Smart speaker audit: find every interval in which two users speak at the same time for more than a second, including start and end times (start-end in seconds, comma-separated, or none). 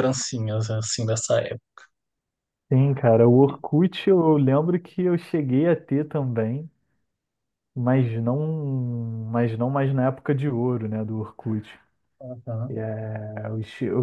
none